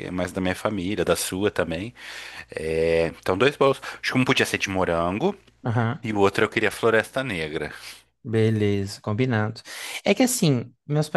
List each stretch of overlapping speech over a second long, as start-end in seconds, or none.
none